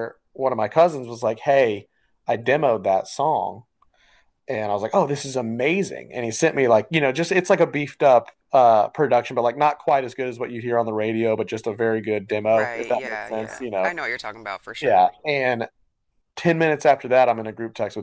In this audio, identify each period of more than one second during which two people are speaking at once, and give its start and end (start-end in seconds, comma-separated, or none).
12.4-13.9